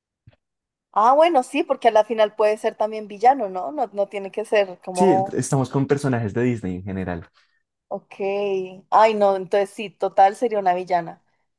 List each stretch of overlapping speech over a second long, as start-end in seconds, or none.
none